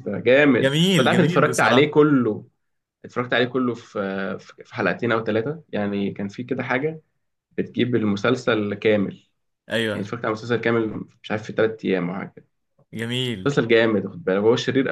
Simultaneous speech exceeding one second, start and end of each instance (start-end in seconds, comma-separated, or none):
0.6-2.0